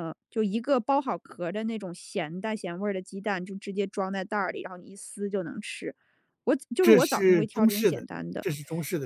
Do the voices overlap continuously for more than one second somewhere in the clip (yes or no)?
yes